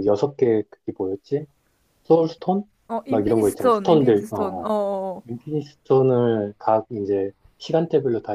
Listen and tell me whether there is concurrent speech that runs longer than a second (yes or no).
yes